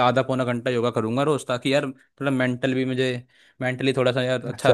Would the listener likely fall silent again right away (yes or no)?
no